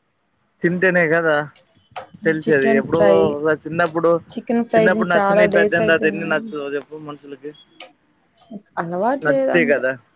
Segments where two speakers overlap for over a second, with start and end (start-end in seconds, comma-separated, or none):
4.7-6.5